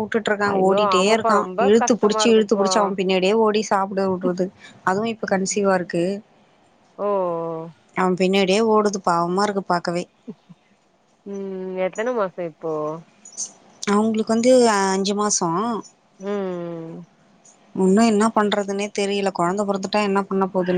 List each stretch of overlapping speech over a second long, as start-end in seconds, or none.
0.5-2.7